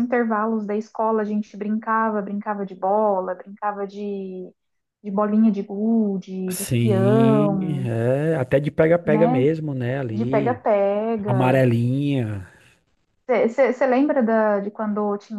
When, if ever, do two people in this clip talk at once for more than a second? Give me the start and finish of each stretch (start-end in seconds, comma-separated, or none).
6.5-7.9